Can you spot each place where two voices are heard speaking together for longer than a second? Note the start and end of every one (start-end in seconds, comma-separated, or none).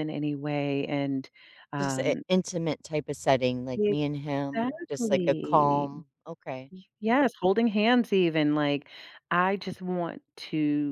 4.5-5.9